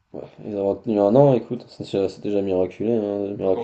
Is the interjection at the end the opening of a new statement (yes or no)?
yes